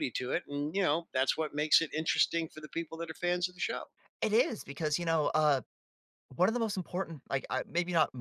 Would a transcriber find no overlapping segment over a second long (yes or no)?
yes